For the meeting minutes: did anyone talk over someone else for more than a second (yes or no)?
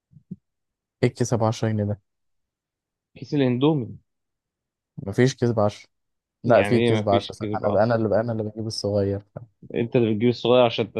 yes